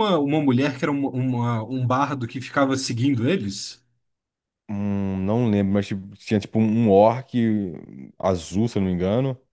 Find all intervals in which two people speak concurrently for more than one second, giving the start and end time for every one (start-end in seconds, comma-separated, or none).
none